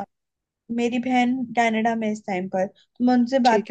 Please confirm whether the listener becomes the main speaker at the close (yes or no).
no